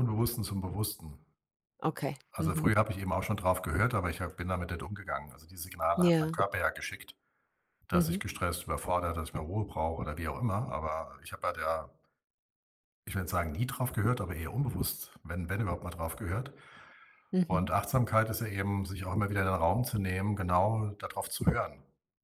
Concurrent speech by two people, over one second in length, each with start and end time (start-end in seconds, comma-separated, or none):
none